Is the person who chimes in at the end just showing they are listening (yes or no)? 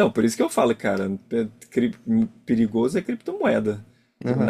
no